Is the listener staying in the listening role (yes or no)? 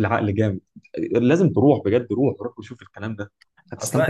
no